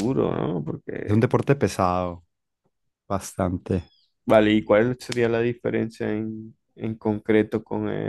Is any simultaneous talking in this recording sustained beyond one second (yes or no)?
no